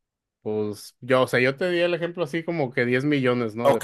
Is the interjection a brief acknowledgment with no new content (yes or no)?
no